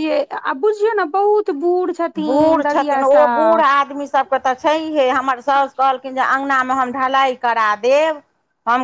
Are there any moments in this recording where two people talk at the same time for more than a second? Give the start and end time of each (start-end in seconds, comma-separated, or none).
none